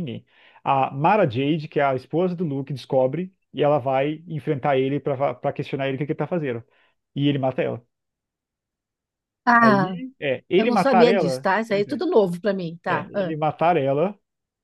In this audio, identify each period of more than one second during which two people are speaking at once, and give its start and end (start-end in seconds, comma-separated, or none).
10.6-12.0